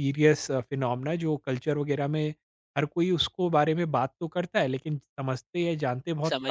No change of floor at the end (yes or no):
no